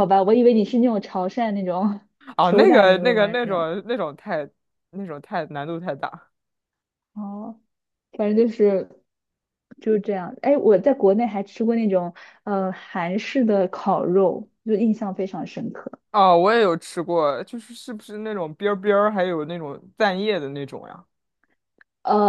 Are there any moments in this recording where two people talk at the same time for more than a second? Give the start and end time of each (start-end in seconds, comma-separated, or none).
2.4-3.7